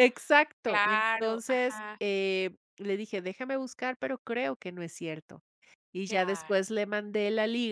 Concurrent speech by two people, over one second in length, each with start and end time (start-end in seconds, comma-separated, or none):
0.6-2.0